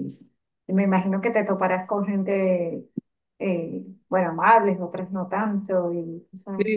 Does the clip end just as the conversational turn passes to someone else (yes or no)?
yes